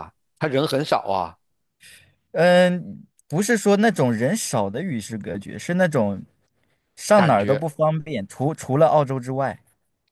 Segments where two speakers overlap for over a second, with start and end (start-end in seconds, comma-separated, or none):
none